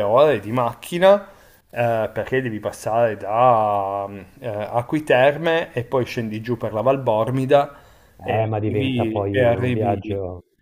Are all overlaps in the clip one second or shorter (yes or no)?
no